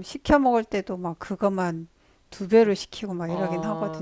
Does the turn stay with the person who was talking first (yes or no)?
no